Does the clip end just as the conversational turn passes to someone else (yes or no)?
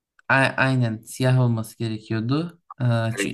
no